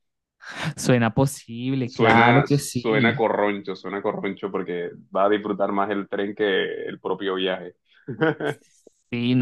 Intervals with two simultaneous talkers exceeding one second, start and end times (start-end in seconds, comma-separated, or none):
1.8-3.3